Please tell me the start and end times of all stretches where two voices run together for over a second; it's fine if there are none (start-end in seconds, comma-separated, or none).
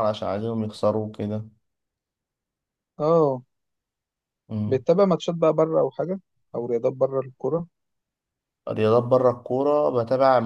none